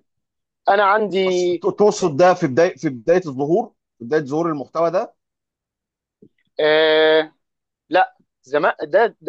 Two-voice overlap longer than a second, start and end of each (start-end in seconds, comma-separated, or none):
none